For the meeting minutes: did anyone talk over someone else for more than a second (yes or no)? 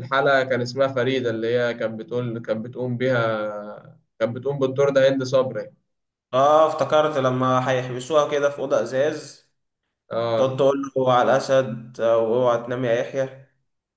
no